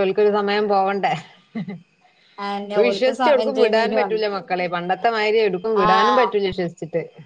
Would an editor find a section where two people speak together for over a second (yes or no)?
yes